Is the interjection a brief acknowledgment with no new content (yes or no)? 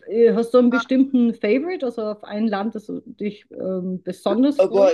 no